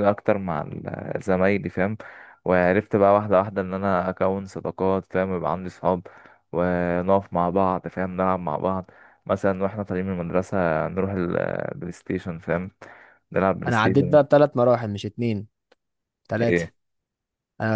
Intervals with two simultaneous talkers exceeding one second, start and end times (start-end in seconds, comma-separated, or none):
none